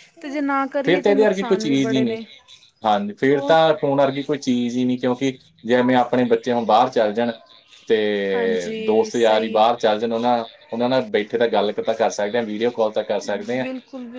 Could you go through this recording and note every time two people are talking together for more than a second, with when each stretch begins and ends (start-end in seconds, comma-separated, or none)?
0.8-2.2, 8.3-9.8